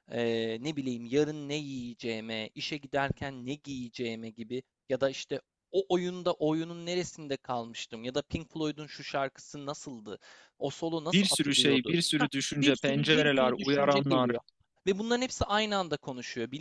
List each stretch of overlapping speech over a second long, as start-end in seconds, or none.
11.1-14.3